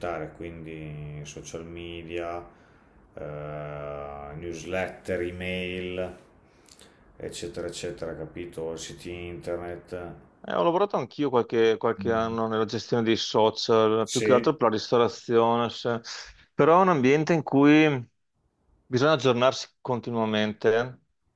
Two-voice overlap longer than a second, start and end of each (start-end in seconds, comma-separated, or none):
none